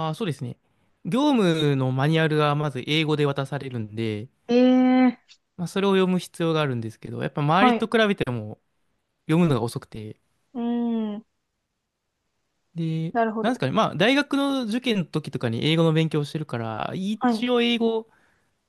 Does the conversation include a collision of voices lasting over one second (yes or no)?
no